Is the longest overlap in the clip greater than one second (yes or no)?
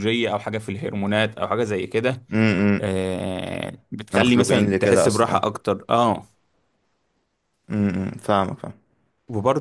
yes